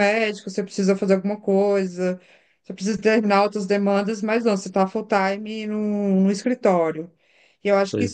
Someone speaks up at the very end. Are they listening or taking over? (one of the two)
listening